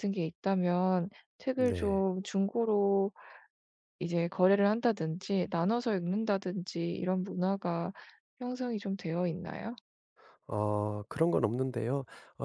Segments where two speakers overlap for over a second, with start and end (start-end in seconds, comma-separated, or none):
none